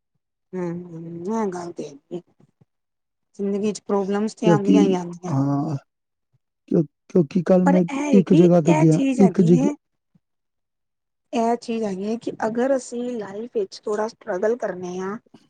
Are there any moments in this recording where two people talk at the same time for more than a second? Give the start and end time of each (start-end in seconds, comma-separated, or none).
7.6-9.6